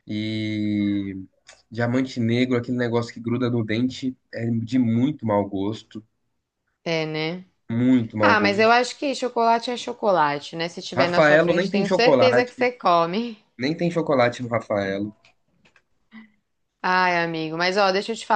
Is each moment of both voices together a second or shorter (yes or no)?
no